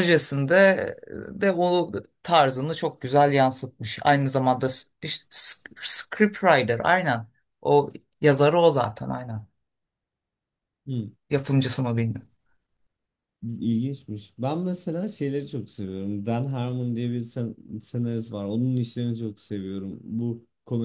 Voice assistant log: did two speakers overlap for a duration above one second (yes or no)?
no